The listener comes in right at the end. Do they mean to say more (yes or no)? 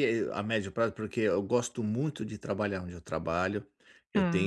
no